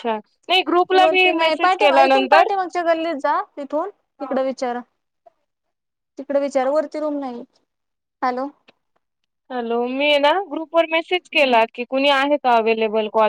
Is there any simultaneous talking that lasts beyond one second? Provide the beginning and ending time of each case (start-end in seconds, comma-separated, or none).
1.0-2.5